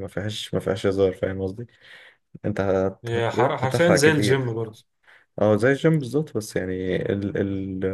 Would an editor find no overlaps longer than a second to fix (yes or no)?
no